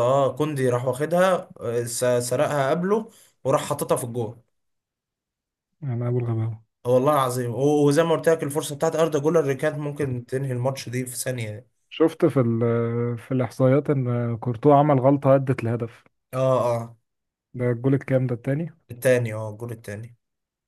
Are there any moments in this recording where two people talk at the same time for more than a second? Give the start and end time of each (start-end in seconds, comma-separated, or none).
none